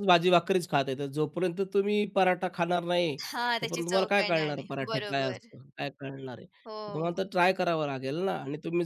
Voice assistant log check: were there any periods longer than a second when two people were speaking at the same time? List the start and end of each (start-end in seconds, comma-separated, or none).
3.6-5.5